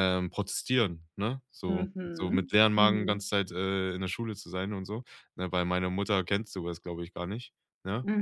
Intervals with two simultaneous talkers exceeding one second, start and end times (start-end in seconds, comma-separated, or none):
1.6-3.2